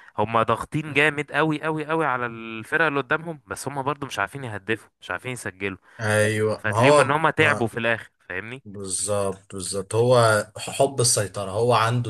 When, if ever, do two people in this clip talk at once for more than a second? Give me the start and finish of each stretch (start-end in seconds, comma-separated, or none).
6.2-7.7